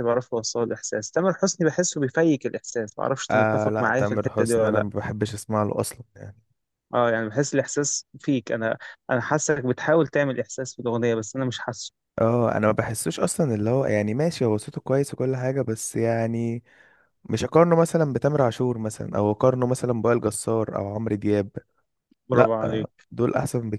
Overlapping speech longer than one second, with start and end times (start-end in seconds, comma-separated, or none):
3.3-4.9